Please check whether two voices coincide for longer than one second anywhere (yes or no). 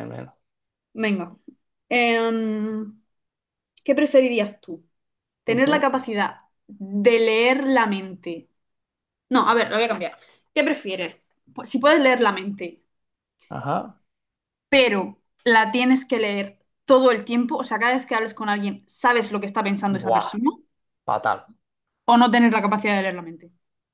no